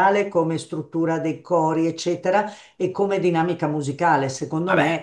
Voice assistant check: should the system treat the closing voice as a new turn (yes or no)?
no